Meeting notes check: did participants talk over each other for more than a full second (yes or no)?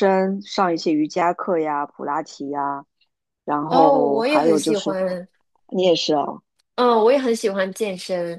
yes